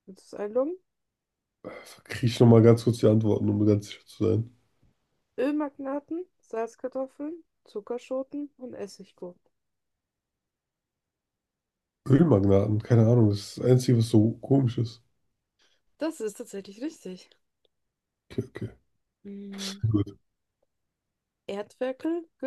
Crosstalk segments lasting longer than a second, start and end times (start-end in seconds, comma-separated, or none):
none